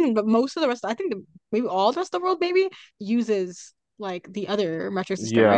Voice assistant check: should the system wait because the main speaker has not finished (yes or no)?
no